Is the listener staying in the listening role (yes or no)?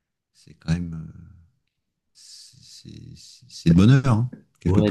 no